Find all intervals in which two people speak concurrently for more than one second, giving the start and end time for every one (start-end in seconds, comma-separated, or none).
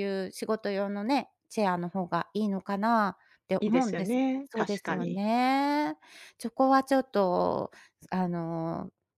3.6-5.2